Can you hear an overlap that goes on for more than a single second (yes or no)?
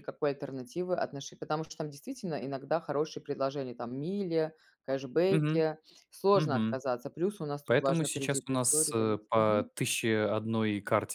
yes